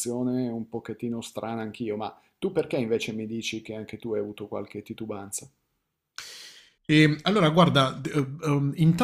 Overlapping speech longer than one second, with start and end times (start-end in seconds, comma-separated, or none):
none